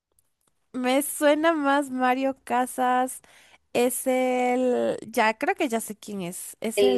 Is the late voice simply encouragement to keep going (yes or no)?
no